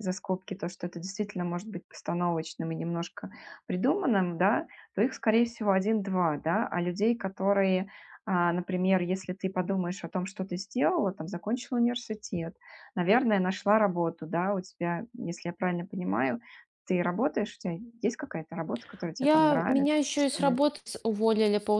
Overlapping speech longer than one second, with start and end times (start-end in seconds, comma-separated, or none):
19.2-20.6